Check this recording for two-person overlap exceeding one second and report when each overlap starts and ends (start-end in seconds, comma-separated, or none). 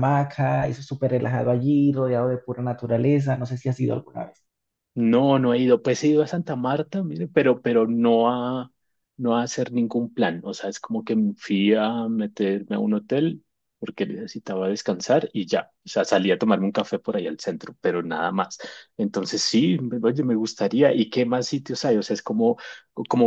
none